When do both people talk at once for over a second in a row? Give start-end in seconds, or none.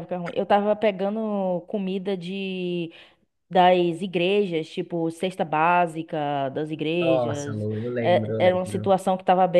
7.0-8.9